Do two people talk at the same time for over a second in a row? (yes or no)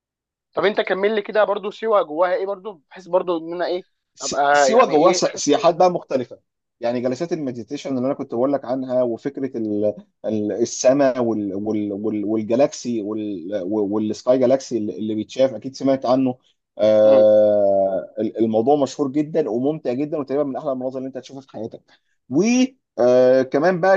yes